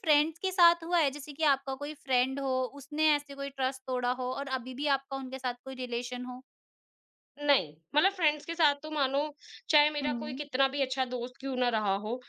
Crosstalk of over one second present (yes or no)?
no